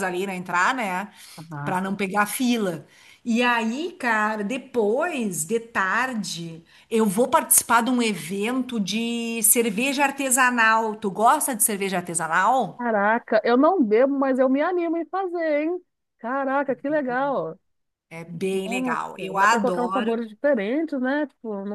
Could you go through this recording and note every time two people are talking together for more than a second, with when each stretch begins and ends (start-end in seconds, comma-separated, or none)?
18.6-20.2